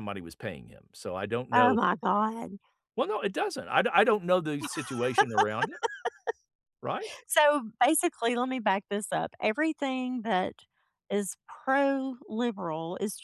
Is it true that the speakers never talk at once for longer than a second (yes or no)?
yes